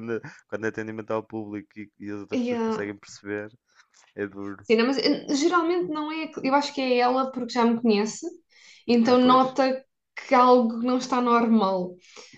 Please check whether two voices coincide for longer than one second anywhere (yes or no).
no